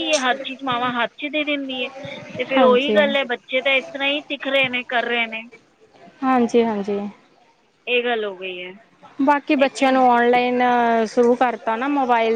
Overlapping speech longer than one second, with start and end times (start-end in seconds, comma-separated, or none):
none